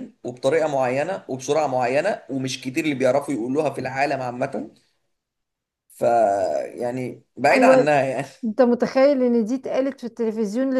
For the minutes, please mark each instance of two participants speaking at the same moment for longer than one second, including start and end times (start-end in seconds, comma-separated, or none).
none